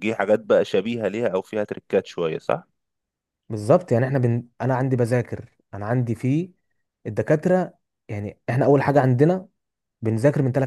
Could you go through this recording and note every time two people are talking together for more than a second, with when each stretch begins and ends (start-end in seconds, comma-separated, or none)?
none